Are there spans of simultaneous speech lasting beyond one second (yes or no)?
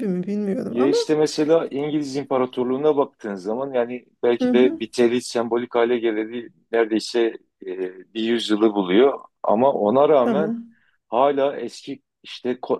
no